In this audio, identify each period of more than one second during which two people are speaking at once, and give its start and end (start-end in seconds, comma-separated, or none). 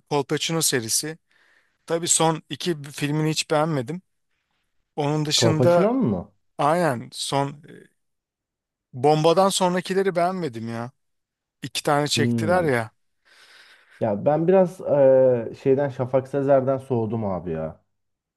none